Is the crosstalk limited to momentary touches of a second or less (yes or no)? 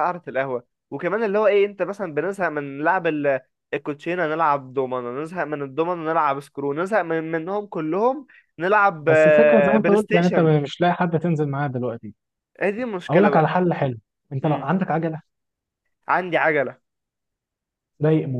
no